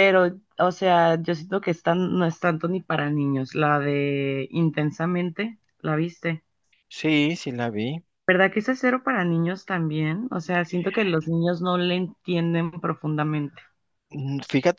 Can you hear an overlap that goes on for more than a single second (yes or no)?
no